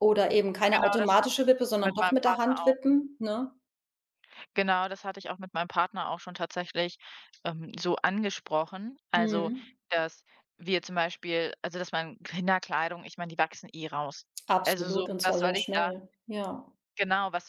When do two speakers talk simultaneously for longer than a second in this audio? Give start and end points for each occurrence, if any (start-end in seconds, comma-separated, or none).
0.7-2.8, 14.6-15.8